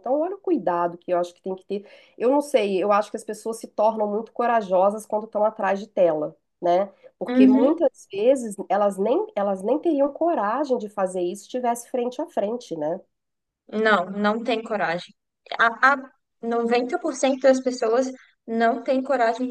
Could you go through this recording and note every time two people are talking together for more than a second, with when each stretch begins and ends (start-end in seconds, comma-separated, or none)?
none